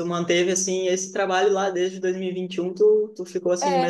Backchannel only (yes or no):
yes